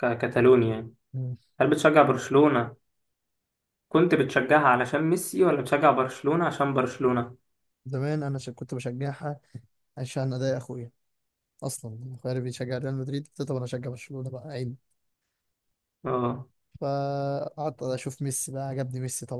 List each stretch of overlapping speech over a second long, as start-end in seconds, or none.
none